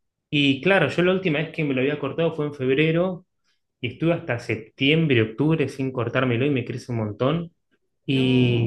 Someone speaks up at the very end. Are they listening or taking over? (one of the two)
listening